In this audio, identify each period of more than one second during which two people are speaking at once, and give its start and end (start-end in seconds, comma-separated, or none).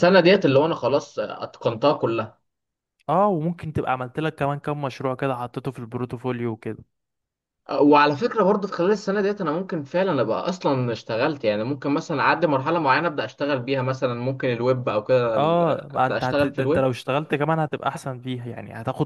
15.3-16.9